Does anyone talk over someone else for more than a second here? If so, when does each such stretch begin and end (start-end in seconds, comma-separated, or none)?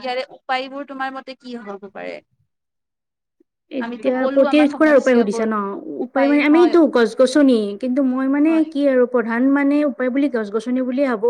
3.9-5.4